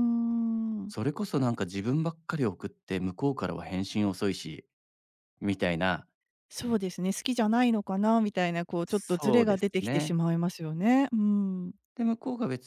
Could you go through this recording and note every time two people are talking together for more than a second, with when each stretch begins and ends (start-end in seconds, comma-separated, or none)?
8.8-10.2